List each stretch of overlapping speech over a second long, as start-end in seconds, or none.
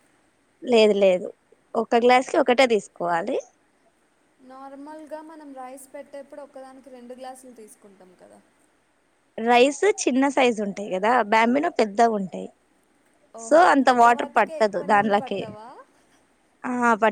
13.5-15.4